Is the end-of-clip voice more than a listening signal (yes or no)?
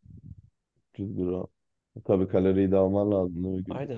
yes